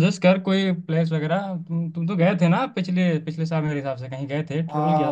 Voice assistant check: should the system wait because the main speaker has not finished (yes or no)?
no